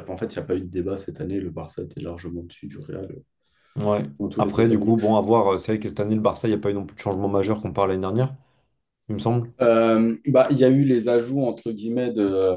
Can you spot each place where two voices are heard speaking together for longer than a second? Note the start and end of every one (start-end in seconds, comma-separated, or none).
none